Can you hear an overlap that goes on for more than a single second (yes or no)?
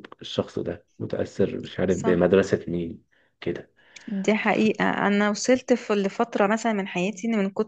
no